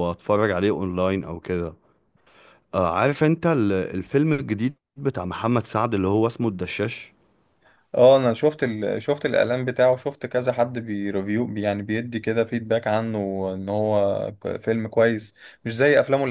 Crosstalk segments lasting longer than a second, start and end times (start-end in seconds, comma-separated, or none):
none